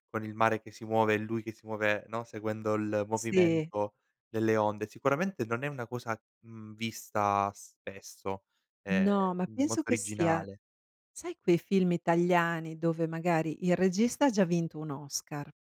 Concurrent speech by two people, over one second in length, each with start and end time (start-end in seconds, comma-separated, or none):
8.9-10.4